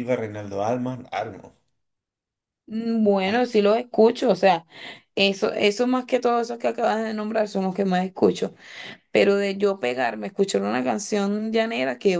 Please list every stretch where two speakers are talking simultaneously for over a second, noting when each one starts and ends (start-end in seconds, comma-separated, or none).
none